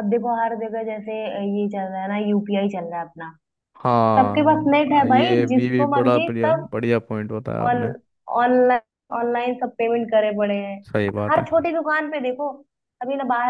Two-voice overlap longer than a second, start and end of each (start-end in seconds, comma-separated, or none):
4.2-6.7